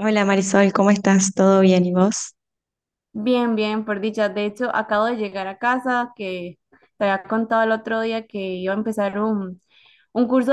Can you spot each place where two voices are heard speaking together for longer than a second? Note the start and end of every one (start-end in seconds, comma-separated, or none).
none